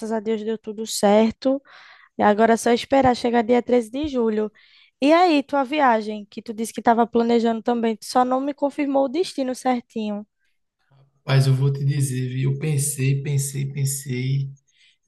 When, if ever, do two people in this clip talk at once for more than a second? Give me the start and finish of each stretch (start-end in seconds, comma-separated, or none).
none